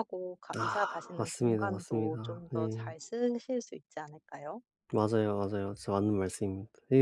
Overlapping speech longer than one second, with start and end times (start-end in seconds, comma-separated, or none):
0.6-3.0